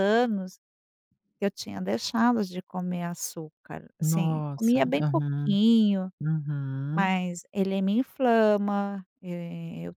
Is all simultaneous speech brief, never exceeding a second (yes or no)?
no